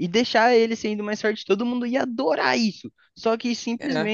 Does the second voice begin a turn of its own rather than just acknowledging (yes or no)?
no